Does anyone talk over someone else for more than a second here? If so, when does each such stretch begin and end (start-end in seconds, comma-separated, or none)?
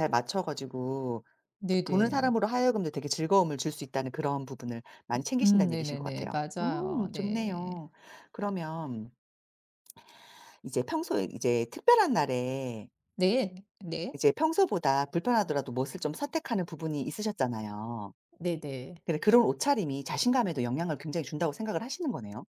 5.4-7.8